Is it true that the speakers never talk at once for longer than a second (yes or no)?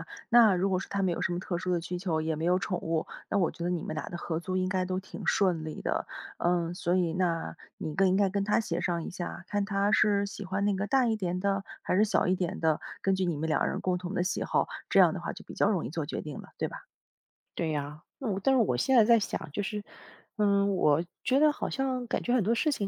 yes